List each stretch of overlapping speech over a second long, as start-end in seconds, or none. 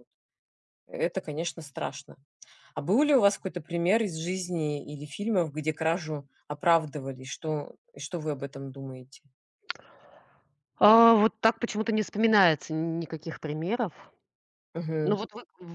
none